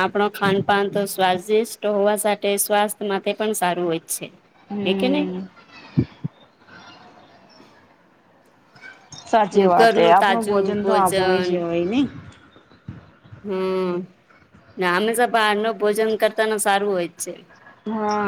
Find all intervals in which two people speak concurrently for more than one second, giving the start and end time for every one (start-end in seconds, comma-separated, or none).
9.8-11.5